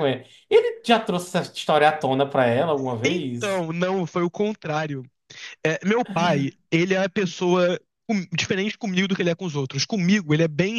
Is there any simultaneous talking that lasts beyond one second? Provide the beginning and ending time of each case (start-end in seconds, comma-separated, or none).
none